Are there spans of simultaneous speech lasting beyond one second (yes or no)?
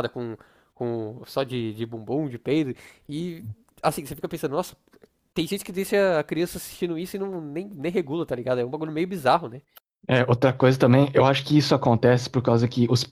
no